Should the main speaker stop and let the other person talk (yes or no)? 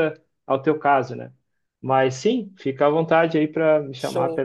no